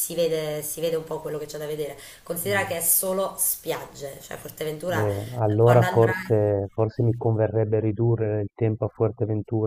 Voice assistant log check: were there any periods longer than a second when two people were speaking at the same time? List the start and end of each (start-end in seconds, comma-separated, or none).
4.9-6.4